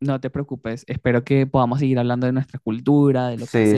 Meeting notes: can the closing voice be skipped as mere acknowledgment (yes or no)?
no